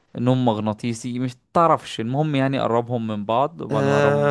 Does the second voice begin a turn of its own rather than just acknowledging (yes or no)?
yes